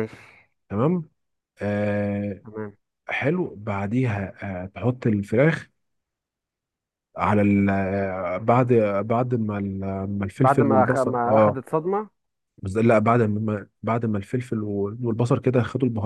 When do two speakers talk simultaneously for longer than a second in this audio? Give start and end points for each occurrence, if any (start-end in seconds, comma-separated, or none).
10.4-11.6